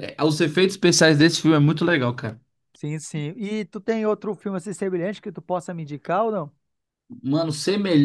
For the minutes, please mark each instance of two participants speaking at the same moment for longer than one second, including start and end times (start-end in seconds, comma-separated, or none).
none